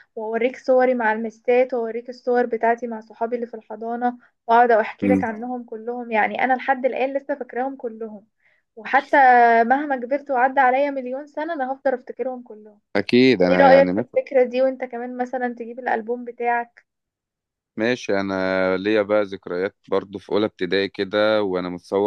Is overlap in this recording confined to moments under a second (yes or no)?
yes